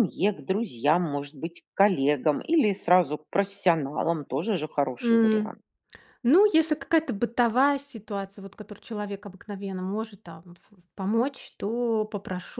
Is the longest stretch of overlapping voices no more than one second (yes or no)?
yes